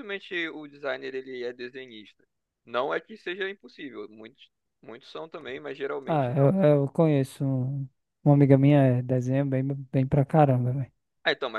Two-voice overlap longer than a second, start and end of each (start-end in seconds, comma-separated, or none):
none